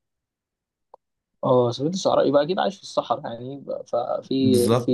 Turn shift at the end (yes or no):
no